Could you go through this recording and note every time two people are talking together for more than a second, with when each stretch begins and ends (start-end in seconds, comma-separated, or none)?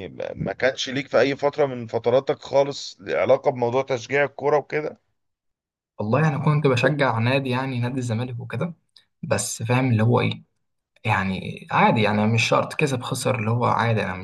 none